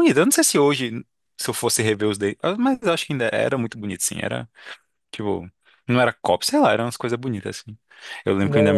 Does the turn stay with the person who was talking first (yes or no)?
yes